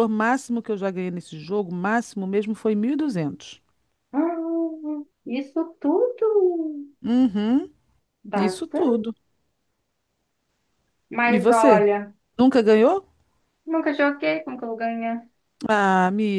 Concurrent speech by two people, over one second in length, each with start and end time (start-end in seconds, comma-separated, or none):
none